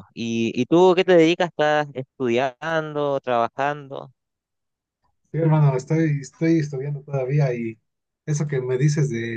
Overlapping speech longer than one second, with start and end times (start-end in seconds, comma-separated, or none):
none